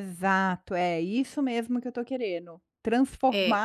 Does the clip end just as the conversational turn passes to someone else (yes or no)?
no